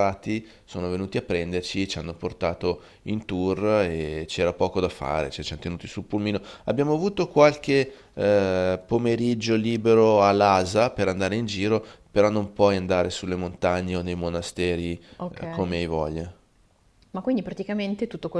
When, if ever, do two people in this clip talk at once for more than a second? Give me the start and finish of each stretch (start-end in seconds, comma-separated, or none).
none